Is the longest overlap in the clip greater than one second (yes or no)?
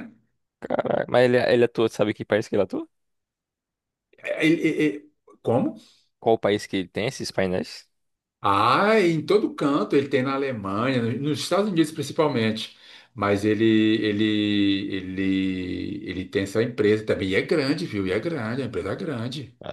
no